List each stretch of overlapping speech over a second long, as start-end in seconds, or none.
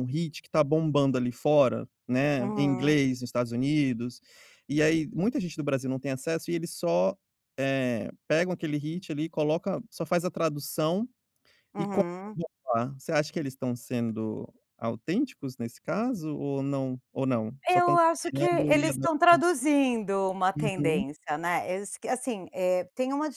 17.6-19.4